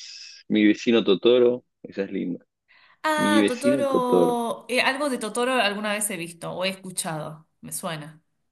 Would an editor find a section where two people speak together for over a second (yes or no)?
yes